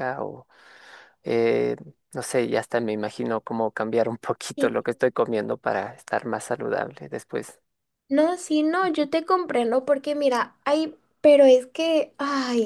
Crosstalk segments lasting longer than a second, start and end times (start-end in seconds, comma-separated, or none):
none